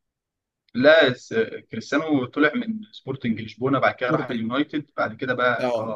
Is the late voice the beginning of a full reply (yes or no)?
yes